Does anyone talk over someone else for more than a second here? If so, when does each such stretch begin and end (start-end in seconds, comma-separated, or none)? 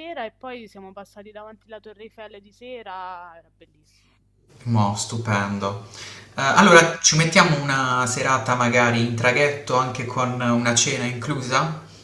none